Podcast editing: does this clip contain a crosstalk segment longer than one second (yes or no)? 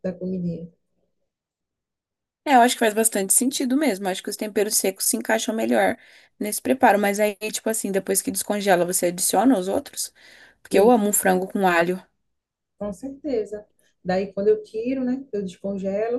no